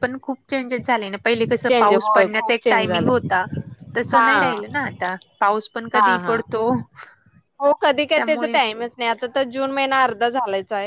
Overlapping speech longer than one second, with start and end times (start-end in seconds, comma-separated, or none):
1.7-3.3